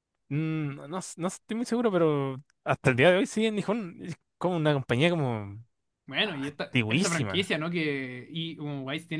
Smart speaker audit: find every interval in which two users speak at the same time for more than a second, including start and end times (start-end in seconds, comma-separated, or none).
6.2-7.5